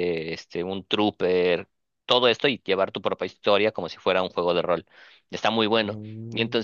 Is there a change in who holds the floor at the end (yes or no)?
no